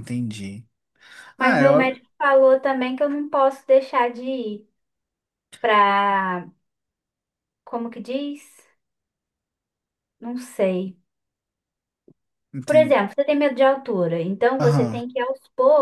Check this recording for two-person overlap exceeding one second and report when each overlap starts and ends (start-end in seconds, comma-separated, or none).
none